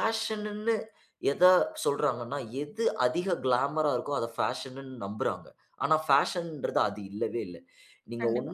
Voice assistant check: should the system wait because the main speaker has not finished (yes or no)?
yes